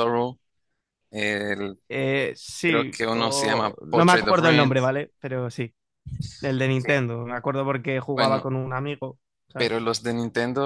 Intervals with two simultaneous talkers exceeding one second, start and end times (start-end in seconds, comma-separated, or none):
2.6-4.7